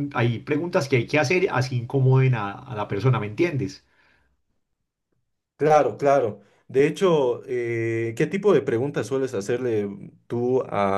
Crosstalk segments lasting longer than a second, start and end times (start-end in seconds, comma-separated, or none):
none